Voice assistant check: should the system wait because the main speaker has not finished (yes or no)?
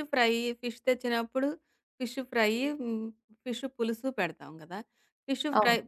yes